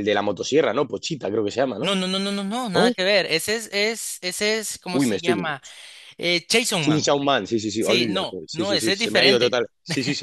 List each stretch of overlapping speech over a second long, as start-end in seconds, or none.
7.8-9.6